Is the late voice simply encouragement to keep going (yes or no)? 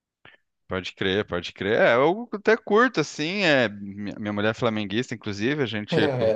yes